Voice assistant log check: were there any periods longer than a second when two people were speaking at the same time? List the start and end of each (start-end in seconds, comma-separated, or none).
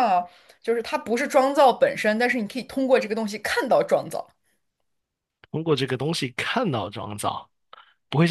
none